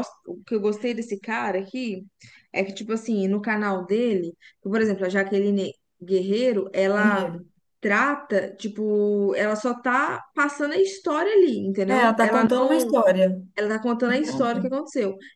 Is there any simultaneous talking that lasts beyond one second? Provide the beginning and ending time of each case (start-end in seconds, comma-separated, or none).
none